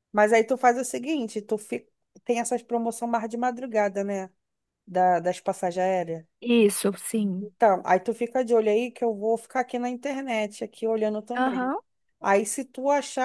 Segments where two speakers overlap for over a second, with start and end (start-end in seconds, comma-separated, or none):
none